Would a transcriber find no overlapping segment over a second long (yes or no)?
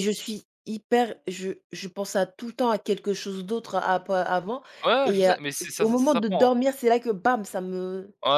no